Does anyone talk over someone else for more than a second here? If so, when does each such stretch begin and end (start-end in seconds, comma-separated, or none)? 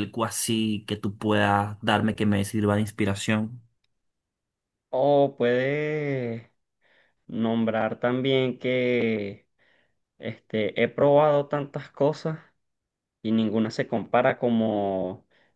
none